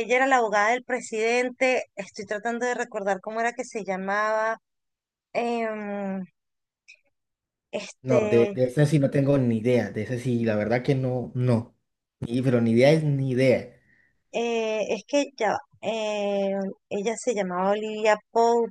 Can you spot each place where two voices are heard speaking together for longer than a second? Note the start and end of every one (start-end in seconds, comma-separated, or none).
none